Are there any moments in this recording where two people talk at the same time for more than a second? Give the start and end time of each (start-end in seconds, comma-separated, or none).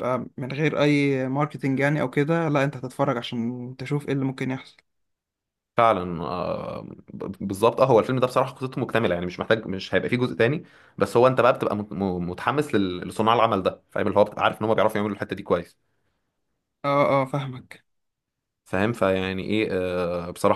none